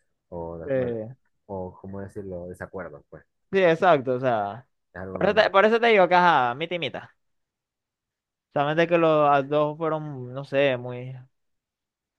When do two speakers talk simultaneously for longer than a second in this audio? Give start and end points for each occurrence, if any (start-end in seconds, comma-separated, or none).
none